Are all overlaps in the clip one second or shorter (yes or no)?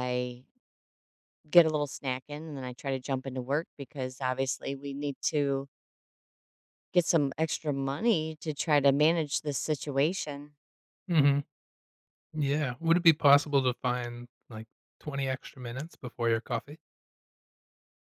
yes